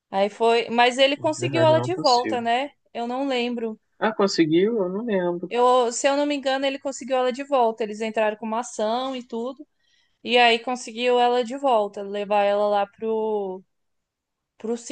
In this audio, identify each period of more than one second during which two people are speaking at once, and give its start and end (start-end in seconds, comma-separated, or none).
1.2-2.4